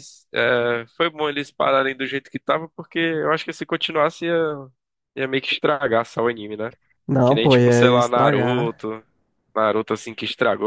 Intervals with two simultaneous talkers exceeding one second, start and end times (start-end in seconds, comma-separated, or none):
7.2-8.8